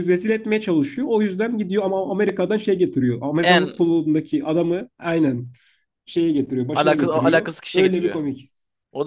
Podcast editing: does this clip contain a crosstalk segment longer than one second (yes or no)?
yes